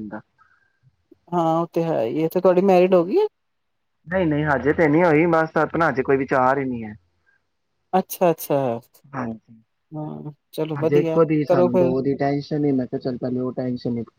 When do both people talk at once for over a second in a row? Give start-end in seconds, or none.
none